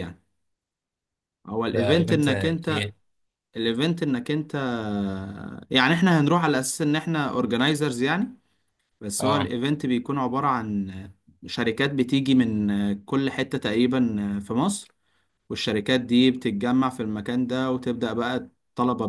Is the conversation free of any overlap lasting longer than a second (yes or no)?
no